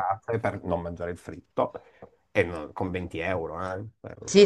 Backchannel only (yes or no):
no